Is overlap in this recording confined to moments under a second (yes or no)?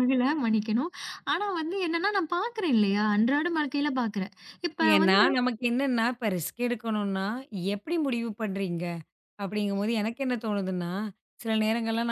yes